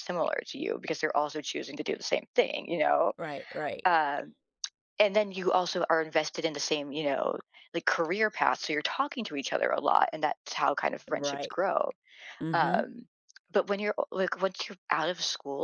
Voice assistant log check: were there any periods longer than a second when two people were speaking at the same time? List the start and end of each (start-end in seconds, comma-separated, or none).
none